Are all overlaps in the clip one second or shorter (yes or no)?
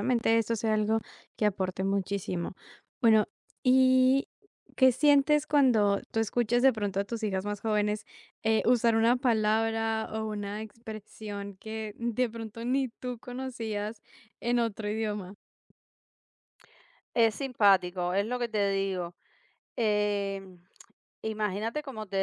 yes